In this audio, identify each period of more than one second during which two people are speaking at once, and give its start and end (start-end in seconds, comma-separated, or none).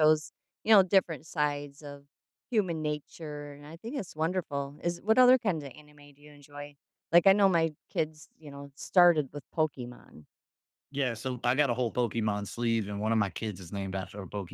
none